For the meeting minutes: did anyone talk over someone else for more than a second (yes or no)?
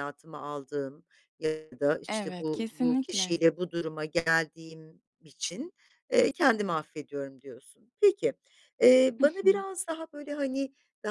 yes